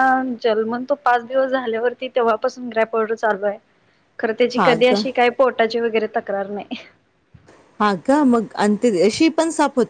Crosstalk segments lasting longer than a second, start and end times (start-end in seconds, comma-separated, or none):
none